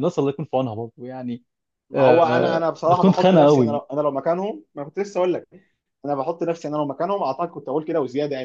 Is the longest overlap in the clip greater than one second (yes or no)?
yes